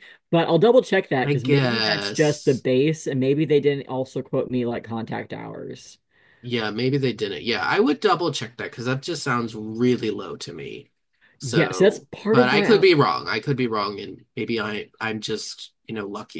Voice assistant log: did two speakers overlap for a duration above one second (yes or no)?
yes